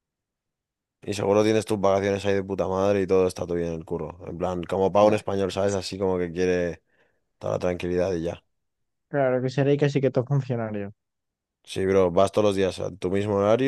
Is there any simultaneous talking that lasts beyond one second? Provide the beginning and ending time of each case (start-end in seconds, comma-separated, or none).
none